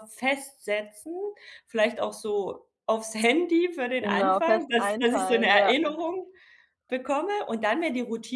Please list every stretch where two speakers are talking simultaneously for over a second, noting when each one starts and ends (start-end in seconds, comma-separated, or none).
4.0-5.7